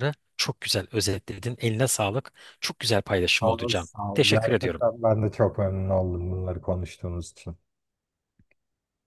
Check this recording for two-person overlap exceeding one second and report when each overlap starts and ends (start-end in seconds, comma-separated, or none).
3.4-5.0